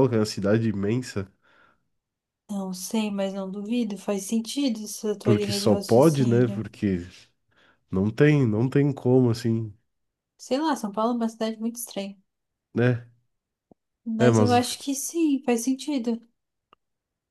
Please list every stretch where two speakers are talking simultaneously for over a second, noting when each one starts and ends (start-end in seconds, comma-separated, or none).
5.2-6.7